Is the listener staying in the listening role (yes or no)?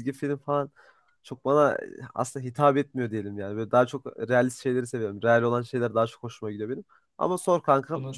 yes